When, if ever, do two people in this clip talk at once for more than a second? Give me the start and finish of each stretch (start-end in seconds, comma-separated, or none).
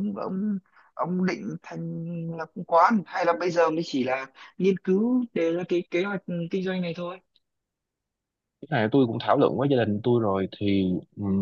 none